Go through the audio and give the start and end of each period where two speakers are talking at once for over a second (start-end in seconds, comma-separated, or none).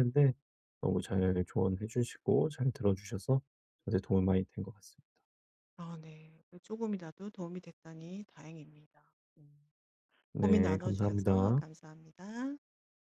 10.3-11.6